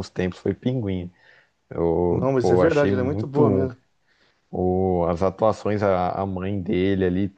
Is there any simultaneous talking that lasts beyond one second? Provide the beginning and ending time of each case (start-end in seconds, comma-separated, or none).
2.1-3.7